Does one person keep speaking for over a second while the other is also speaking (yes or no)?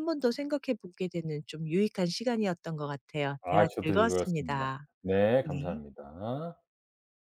yes